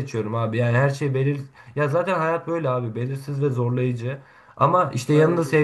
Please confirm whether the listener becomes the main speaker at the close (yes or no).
no